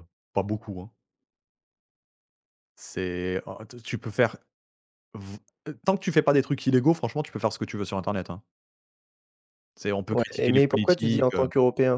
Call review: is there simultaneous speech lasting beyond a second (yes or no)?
yes